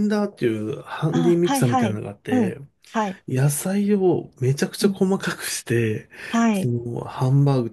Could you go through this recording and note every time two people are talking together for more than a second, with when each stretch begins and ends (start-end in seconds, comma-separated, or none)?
1.1-2.6